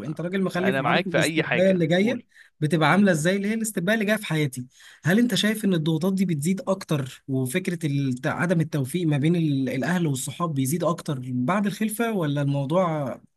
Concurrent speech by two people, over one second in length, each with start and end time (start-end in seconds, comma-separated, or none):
0.6-2.2